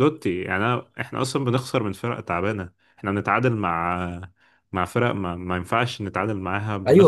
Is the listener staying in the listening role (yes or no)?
no